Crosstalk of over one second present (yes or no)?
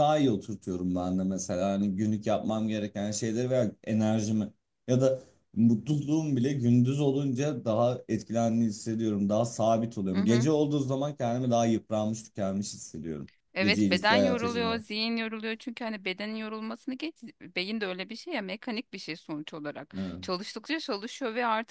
yes